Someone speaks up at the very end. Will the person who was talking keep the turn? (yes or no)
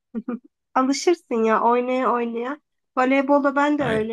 yes